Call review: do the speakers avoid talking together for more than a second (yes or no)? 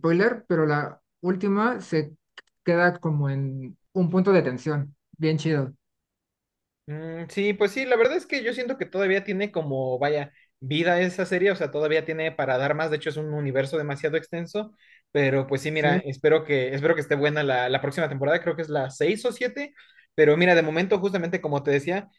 yes